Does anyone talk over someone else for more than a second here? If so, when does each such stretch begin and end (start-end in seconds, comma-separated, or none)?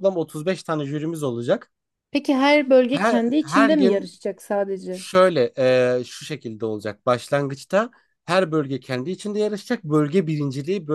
2.9-4.1